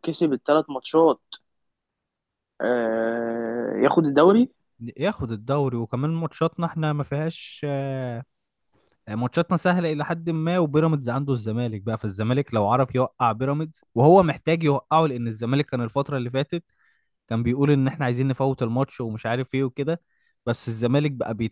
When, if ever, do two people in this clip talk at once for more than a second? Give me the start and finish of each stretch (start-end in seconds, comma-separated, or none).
none